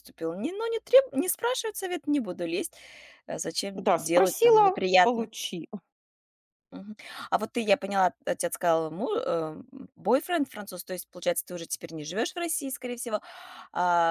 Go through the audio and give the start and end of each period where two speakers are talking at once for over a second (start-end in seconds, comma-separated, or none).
3.8-5.3